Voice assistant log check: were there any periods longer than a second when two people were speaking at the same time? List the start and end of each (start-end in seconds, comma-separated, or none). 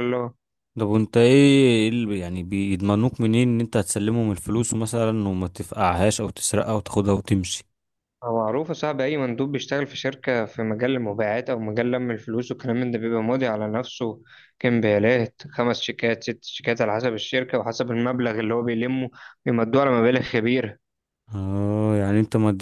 none